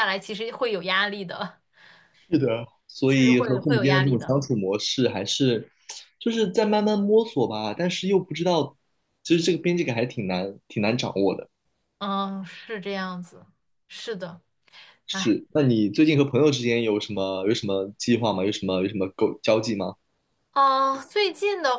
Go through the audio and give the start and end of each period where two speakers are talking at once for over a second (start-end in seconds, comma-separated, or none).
3.1-4.3